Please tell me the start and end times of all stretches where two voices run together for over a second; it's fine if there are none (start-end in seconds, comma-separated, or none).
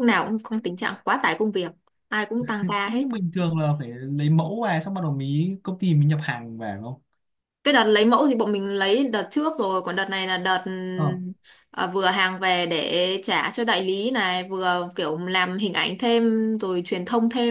none